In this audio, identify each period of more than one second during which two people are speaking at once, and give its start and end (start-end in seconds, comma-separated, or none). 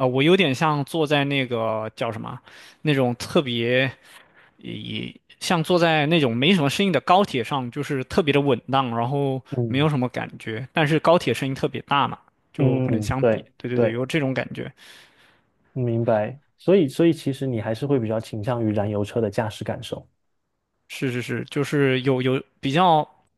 12.6-14.0